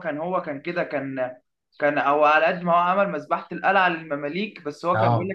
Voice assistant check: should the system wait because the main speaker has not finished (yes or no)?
yes